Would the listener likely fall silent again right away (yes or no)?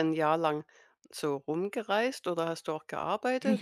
no